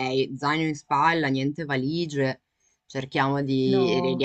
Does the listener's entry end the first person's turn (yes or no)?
no